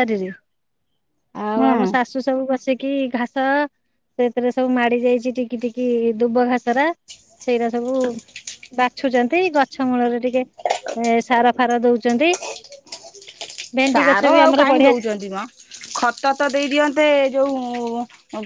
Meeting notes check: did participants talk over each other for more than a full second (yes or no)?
no